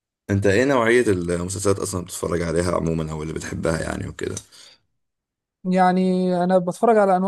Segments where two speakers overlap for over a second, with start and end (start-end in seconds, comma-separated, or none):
none